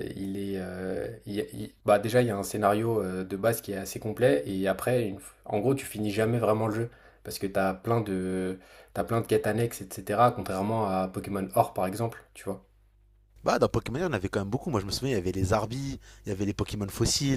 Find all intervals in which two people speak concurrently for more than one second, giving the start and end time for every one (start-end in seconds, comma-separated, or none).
none